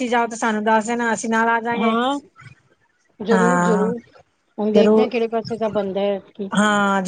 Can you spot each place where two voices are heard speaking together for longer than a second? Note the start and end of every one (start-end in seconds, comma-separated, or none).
none